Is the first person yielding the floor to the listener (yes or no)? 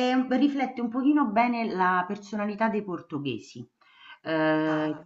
no